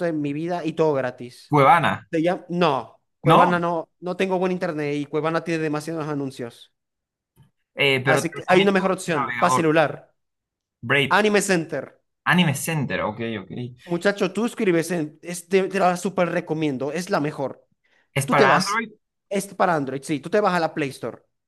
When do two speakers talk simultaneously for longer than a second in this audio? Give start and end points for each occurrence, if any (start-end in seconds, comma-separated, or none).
8.1-9.7